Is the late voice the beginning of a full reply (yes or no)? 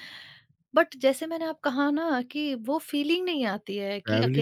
yes